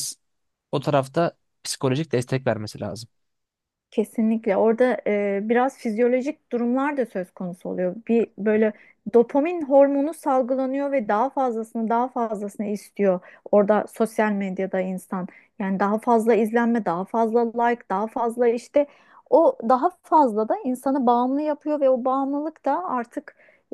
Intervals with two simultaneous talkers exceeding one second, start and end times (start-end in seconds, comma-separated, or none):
none